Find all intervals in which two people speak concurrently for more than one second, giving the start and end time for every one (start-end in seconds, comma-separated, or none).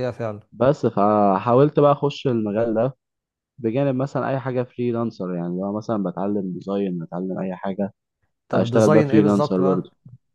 8.5-9.8